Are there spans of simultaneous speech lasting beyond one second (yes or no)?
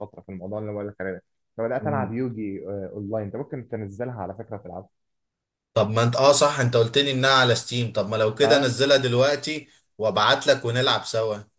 no